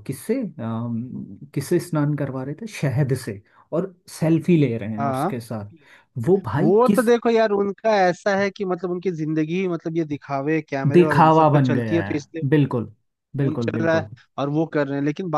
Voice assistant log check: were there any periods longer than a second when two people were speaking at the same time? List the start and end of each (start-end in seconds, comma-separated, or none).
10.9-12.1